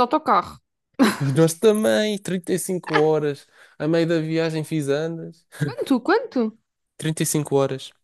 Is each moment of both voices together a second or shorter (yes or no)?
yes